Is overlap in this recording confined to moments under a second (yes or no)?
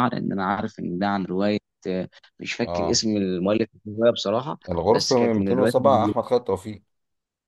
no